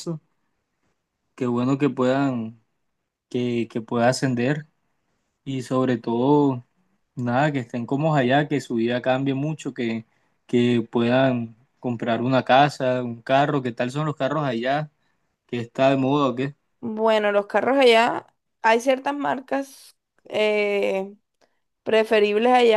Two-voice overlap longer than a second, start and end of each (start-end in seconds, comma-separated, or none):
none